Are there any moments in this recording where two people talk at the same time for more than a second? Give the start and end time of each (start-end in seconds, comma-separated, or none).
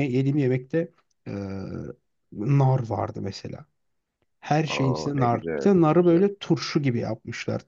4.7-6.2